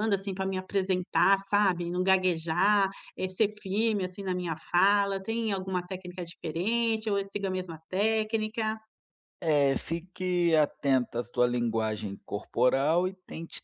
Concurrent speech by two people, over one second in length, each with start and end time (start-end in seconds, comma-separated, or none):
none